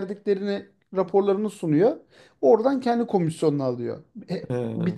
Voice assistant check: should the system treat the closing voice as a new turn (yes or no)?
no